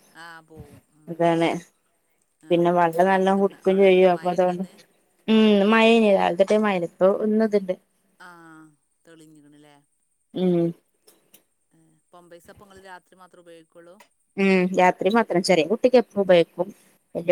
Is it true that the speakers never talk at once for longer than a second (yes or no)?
no